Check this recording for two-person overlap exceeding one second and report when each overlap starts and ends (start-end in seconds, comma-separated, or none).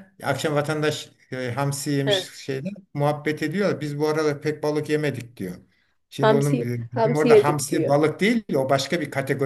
6.2-8.0